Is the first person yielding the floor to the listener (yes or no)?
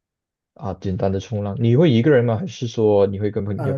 yes